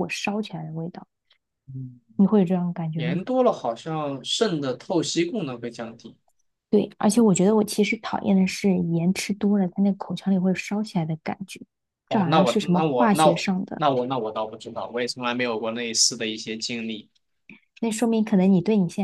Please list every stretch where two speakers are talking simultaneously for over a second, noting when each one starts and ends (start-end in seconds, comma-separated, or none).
12.1-13.8